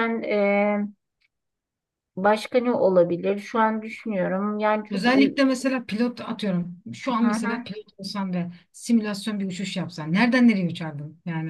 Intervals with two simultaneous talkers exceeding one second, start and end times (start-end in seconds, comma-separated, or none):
none